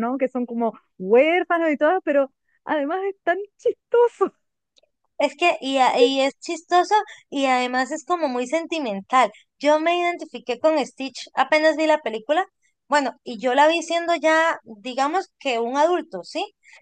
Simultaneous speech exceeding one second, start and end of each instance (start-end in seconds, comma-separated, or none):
none